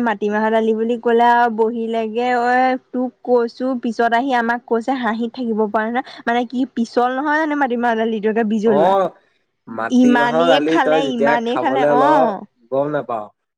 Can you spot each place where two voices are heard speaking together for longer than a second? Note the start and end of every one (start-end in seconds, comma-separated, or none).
10.0-12.0